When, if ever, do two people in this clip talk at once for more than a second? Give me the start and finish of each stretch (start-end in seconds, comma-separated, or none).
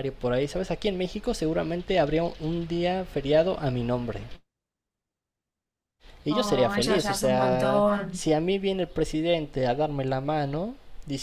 6.3-8.1